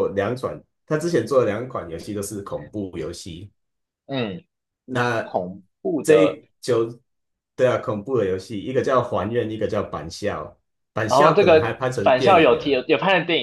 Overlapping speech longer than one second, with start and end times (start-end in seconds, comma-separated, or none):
11.1-12.8